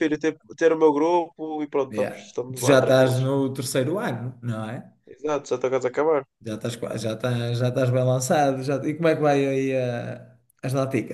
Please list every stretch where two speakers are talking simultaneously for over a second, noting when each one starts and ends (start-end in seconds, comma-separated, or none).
1.9-3.2